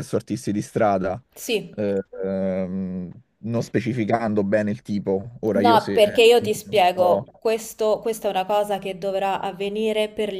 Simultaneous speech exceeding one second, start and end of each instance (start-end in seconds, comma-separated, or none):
5.5-7.2